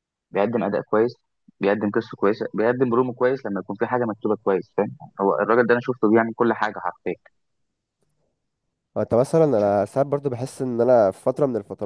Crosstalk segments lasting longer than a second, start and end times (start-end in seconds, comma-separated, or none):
none